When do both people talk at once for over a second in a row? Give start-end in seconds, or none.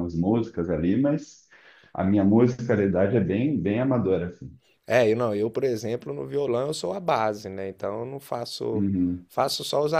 none